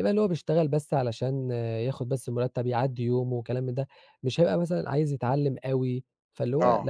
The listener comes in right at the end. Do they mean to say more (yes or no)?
yes